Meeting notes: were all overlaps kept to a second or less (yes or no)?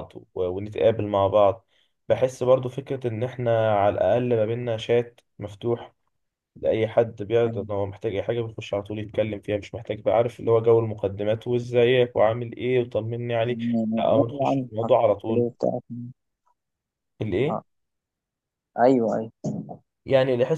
no